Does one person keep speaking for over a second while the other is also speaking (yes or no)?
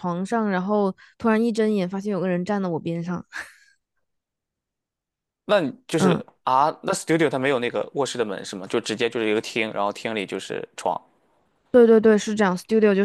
no